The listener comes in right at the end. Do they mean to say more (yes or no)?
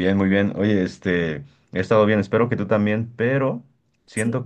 no